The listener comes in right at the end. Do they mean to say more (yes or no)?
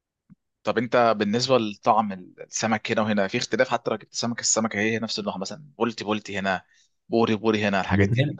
yes